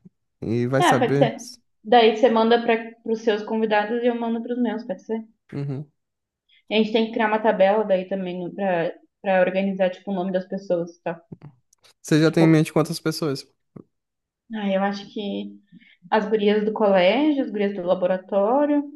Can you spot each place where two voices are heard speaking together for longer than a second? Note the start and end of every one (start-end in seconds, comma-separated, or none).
none